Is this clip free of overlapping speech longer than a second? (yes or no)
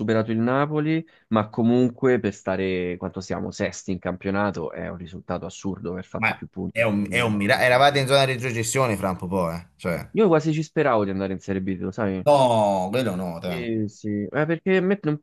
no